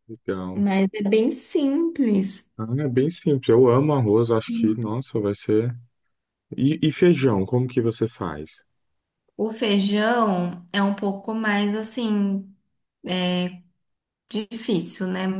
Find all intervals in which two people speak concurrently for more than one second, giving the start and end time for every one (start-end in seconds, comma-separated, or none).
none